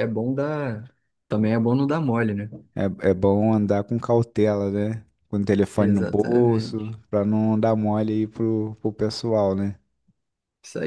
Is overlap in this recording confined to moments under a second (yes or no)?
no